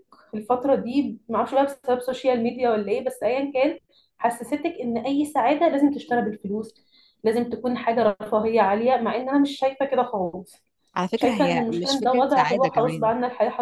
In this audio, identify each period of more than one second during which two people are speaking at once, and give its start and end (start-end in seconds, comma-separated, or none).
11.1-13.1